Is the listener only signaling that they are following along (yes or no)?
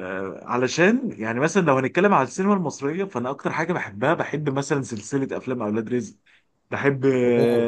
yes